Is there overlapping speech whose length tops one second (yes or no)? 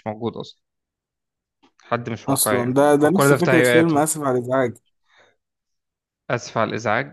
yes